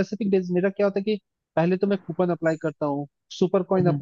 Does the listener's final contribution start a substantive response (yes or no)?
no